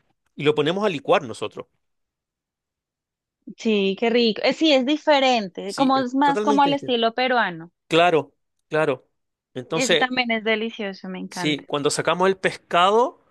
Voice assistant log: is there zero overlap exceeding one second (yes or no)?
no